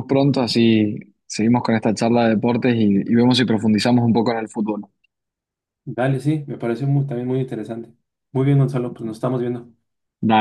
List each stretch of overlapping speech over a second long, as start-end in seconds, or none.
none